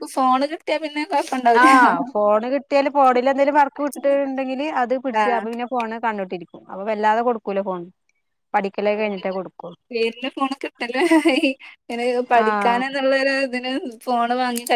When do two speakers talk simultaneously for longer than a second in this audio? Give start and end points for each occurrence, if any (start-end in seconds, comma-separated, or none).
none